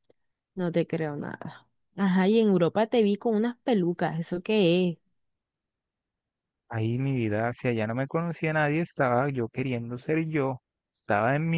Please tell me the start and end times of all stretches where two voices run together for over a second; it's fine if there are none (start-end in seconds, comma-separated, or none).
none